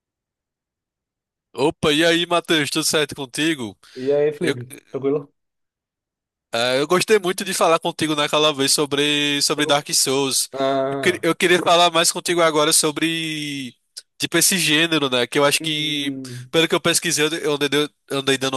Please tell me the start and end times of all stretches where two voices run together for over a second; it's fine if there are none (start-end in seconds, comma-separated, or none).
none